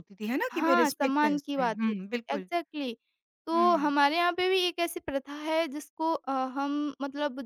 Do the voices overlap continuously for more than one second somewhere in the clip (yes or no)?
yes